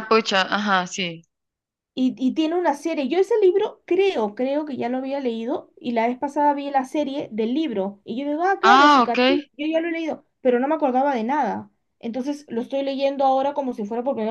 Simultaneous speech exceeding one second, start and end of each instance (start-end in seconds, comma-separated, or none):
none